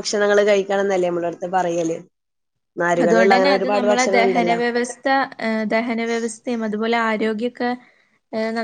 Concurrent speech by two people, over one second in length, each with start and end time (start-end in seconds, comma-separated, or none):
none